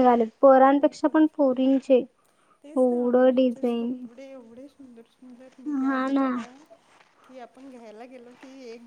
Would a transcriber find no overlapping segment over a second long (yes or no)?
no